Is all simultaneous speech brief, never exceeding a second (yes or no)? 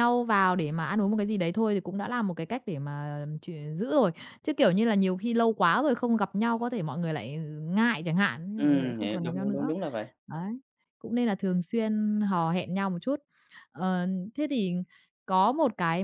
no